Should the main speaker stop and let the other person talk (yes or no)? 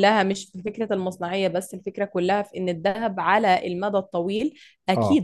no